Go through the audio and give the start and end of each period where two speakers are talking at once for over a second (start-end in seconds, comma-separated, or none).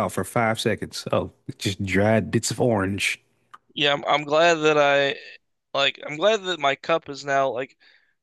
none